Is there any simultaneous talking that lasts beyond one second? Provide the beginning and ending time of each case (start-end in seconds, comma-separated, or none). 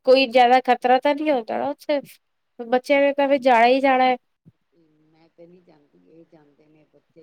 none